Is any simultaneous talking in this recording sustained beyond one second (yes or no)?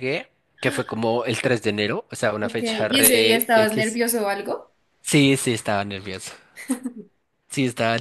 yes